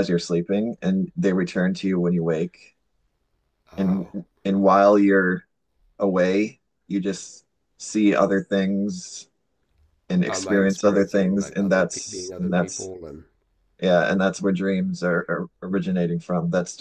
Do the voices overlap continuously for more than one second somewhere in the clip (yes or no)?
yes